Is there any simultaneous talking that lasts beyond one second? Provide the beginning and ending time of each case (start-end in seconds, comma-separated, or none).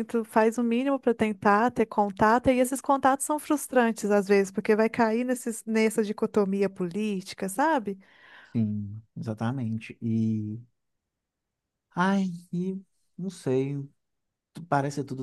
none